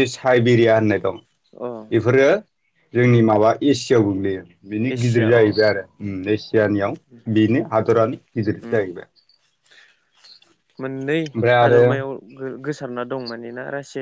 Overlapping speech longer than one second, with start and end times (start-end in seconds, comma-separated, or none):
none